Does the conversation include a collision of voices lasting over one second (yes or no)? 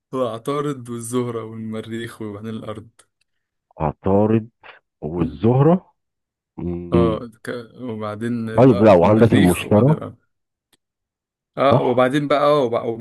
yes